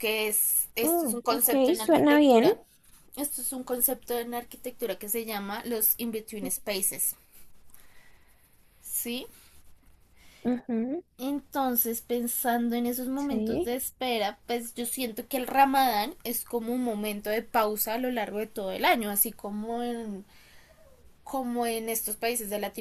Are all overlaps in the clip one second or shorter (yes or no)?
no